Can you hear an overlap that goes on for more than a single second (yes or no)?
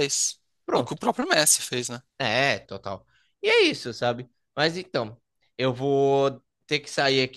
no